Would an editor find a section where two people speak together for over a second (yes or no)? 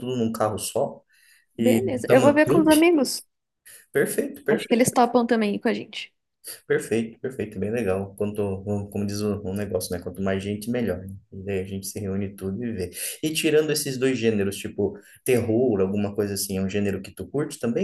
yes